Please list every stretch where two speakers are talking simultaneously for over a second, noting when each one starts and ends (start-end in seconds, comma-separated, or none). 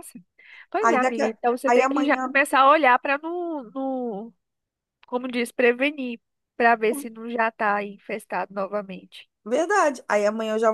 0.8-2.3